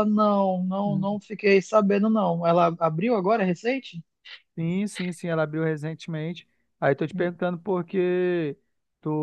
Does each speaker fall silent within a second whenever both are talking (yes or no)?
yes